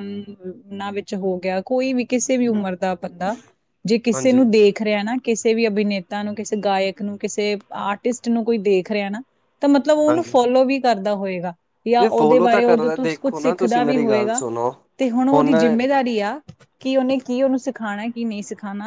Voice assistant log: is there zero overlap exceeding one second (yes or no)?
no